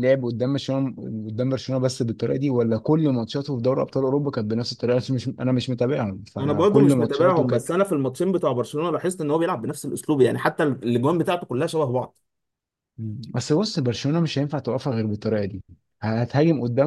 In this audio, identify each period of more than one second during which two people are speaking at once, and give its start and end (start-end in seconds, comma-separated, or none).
6.4-7.7